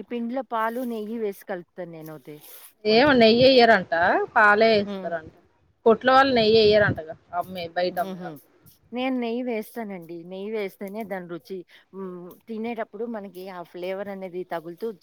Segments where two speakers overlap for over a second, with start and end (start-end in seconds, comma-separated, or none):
none